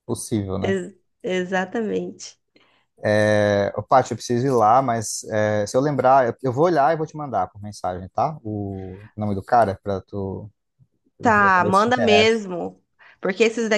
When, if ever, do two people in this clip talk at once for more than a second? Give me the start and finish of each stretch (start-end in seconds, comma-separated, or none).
11.2-12.4